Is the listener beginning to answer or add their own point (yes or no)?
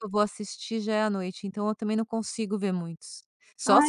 no